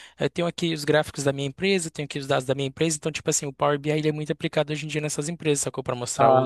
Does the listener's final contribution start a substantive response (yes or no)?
yes